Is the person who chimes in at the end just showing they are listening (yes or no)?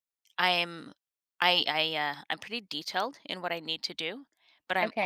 yes